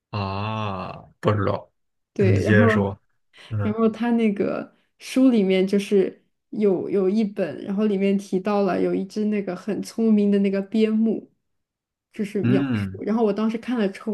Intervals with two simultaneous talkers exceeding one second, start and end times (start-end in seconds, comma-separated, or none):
none